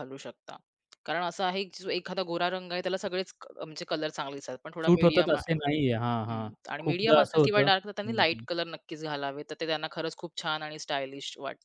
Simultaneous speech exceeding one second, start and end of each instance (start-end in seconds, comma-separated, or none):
6.9-8.4